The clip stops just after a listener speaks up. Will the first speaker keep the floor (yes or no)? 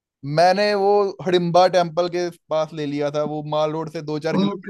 no